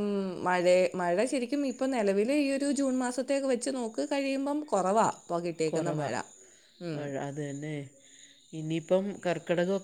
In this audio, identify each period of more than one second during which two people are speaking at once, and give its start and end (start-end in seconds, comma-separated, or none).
none